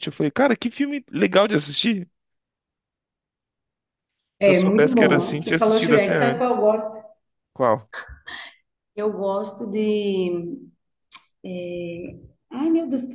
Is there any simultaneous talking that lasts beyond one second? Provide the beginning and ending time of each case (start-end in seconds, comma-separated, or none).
4.4-6.6